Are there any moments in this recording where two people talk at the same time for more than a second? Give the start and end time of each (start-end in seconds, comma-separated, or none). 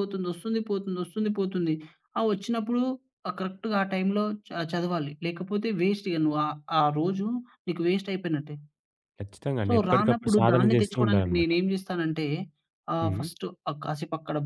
9.7-11.5